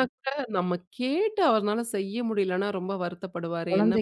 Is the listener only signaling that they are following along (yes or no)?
no